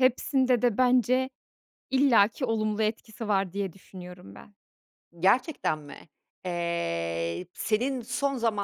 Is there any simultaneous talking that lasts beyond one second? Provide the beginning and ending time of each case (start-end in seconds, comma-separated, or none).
none